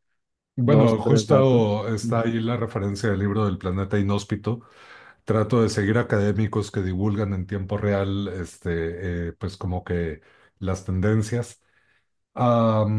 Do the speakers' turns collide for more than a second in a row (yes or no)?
yes